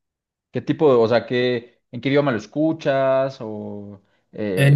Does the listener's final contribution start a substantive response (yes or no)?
yes